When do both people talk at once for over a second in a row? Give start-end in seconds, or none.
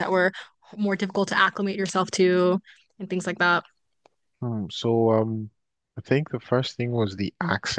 none